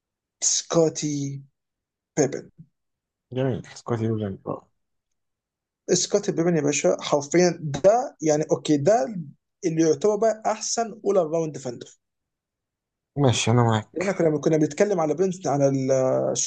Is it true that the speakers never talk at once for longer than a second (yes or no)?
yes